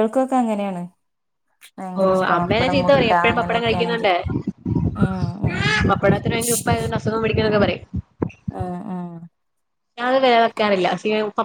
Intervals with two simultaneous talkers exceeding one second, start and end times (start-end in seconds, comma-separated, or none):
2.0-4.1